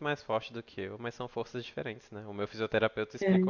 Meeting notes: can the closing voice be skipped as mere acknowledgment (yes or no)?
yes